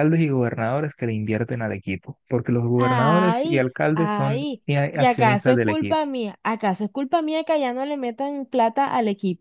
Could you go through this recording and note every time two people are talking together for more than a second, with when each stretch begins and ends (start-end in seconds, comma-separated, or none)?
2.8-6.0